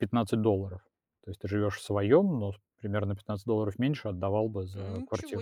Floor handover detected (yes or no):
yes